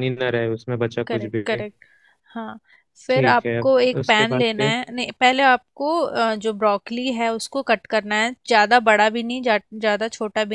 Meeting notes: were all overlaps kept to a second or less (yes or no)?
no